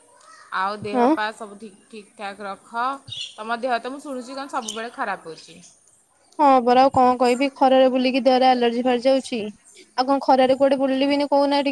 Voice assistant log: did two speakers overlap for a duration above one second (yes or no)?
no